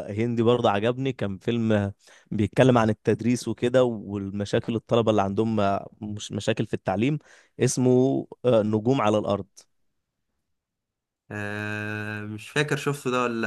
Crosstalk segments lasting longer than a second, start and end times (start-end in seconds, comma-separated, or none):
none